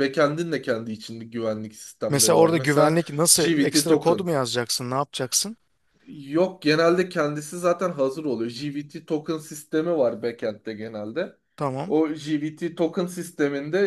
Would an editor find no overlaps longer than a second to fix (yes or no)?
no